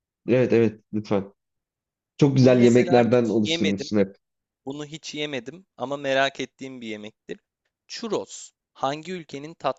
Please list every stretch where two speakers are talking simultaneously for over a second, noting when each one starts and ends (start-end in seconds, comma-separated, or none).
2.4-3.9